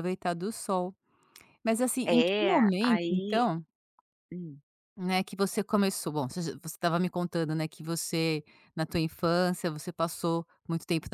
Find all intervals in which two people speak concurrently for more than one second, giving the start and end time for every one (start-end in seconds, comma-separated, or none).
2.0-3.5